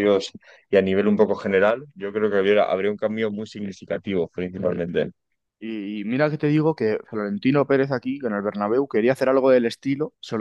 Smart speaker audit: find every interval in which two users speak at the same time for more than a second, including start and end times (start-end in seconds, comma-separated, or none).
none